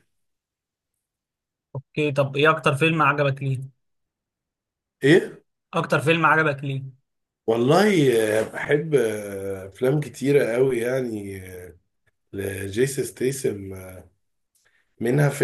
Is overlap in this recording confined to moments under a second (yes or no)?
yes